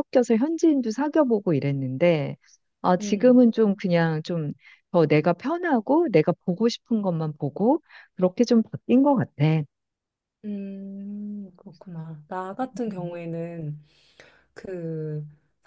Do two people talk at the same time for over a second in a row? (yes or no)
no